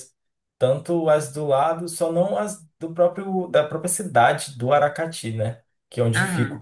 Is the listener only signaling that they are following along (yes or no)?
yes